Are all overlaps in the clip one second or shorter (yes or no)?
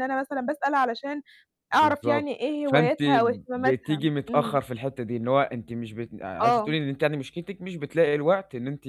no